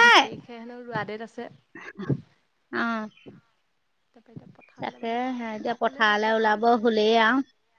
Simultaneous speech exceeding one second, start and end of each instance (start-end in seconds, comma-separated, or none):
4.8-6.8